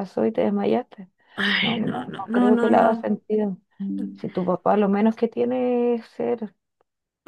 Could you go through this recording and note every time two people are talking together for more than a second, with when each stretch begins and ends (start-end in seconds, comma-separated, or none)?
1.6-3.1